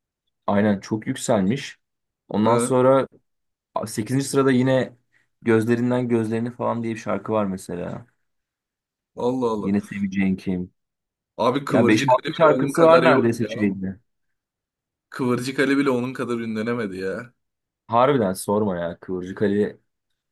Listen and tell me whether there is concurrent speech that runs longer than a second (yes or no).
yes